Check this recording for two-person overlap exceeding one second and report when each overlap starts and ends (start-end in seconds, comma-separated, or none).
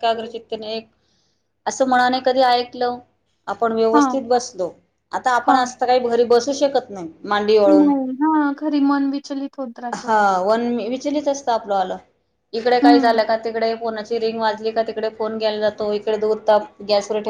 none